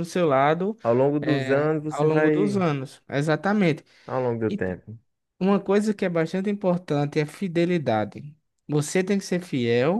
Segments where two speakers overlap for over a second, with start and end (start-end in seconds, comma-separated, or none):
1.2-2.6